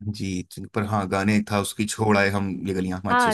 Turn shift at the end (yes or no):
yes